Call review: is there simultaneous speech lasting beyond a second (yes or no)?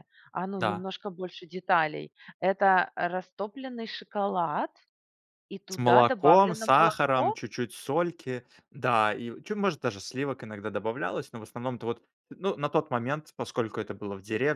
yes